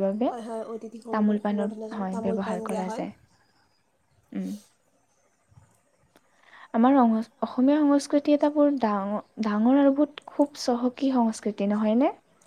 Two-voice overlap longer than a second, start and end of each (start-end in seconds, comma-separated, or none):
1.1-3.1